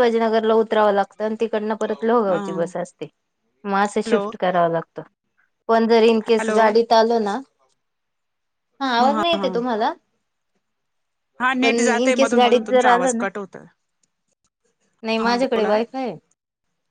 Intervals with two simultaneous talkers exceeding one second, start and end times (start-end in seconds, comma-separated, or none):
11.6-13.2